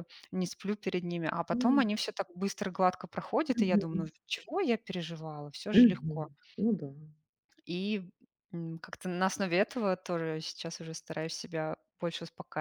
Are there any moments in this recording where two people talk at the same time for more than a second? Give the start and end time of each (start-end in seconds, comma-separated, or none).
none